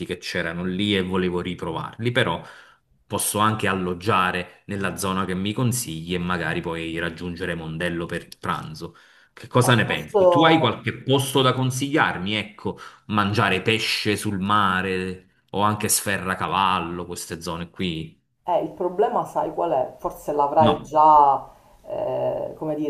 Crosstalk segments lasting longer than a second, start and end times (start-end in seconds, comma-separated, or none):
9.6-10.8